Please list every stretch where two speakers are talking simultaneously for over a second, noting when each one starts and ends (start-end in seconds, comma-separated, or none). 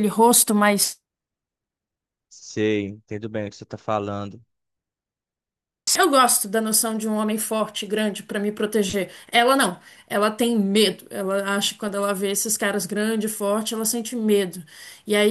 none